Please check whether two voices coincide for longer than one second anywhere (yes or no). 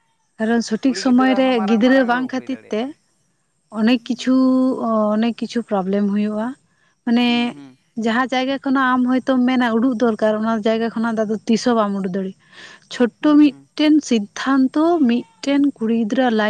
yes